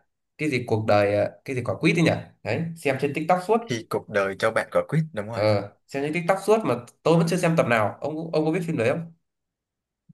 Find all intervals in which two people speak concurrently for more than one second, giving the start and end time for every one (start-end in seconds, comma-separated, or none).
none